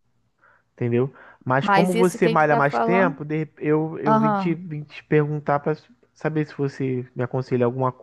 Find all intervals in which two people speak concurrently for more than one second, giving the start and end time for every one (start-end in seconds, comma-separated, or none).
1.6-3.2